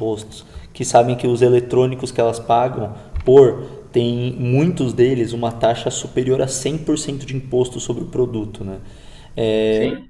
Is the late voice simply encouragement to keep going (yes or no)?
yes